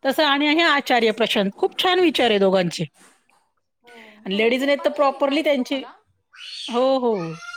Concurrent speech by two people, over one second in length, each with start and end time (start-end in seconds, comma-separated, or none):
4.4-5.8